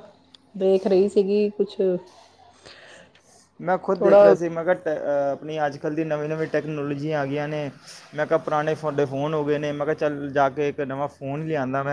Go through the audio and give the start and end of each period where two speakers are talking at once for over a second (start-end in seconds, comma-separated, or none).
none